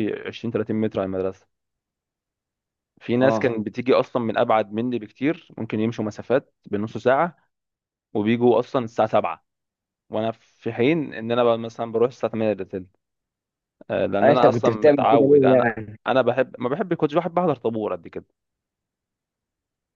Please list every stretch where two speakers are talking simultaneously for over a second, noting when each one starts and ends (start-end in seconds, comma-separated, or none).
14.2-15.9